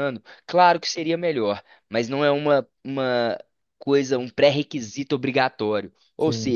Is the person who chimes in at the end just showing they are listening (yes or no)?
yes